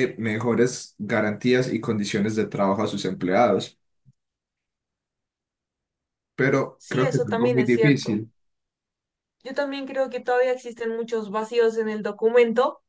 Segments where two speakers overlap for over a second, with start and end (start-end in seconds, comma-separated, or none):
6.8-8.2